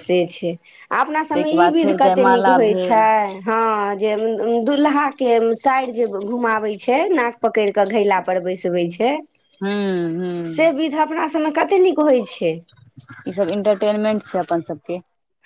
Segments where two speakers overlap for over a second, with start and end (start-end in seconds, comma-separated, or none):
1.3-3.0